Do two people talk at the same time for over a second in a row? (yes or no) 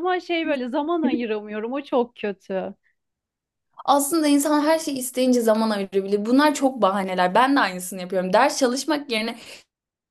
no